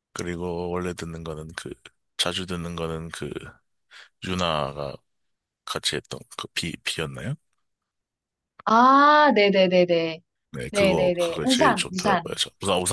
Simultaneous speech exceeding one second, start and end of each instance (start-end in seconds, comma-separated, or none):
10.7-12.4